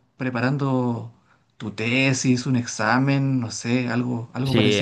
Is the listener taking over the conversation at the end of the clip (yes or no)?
yes